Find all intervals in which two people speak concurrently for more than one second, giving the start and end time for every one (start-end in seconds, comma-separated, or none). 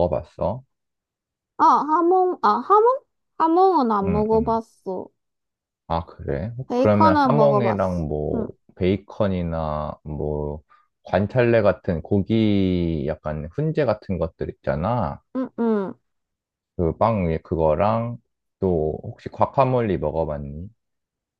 6.7-8.5